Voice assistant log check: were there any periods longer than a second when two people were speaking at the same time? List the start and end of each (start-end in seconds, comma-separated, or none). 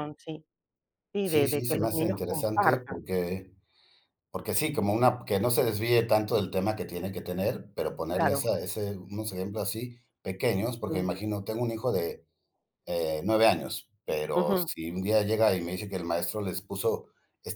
1.2-3.0